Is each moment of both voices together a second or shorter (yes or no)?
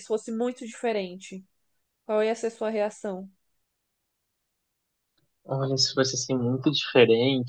yes